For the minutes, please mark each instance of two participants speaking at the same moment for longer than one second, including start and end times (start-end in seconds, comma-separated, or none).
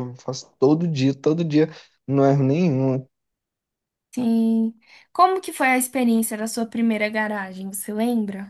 none